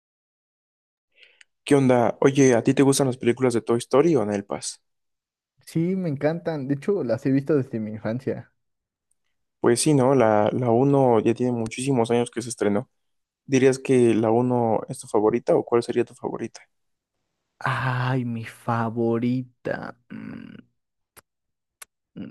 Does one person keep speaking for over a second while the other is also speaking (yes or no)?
no